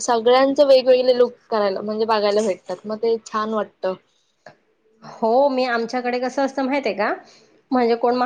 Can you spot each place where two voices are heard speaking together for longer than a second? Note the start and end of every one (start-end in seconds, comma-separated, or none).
none